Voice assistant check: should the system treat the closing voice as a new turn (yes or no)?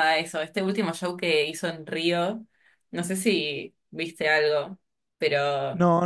yes